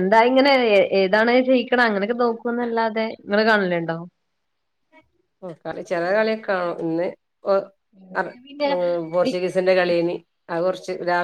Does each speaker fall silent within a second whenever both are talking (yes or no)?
yes